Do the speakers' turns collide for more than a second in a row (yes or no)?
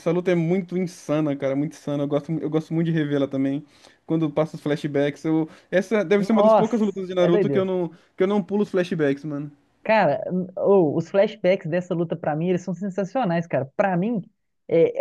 yes